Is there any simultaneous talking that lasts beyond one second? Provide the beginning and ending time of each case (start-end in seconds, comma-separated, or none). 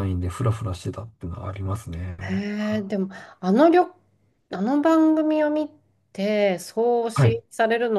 none